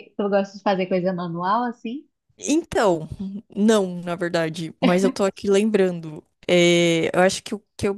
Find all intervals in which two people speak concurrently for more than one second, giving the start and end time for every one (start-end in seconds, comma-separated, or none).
none